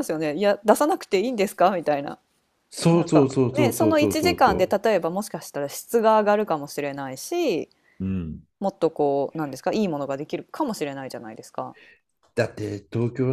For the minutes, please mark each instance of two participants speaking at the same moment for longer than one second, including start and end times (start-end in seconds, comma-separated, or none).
2.9-4.7